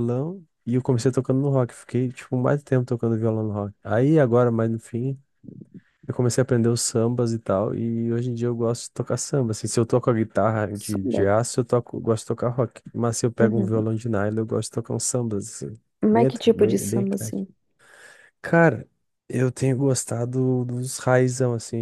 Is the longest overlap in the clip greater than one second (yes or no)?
yes